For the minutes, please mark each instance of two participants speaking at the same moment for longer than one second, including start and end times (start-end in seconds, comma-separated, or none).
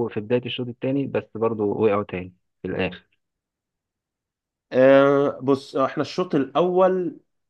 none